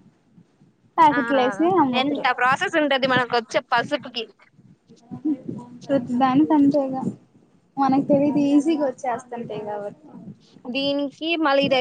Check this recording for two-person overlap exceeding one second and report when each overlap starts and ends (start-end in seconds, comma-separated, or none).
none